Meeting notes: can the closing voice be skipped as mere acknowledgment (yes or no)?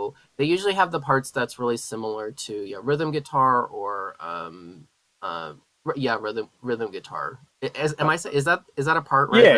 no